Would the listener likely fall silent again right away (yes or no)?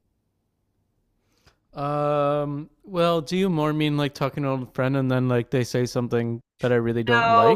no